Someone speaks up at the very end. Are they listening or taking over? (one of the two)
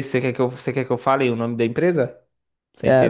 taking over